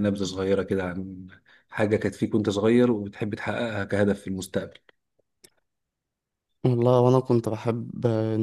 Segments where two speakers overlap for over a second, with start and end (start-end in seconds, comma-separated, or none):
none